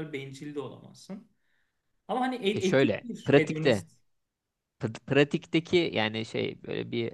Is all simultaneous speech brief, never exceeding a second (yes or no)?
no